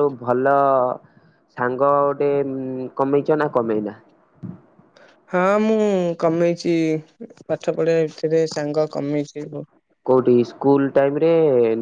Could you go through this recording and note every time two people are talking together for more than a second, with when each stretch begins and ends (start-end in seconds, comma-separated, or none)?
none